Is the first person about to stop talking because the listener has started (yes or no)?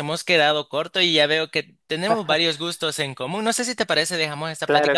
yes